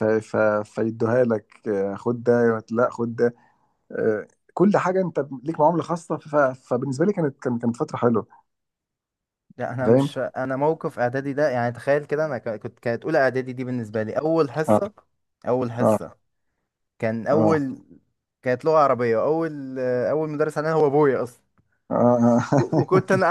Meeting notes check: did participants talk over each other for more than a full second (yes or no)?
no